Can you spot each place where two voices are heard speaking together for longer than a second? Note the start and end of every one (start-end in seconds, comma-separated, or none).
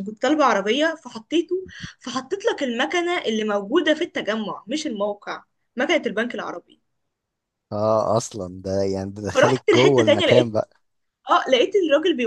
9.3-10.6